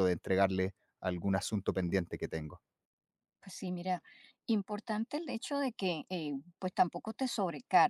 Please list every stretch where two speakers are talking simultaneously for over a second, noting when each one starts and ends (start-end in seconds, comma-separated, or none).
none